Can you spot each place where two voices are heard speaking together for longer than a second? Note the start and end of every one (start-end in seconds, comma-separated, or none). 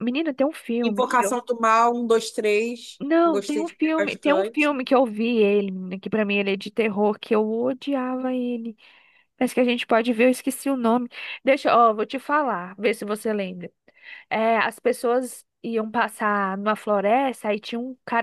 3.0-4.7